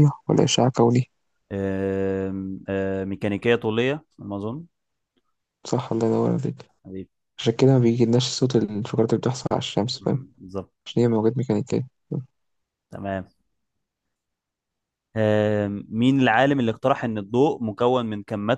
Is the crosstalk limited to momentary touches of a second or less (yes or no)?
yes